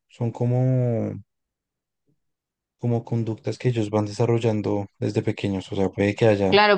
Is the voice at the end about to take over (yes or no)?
yes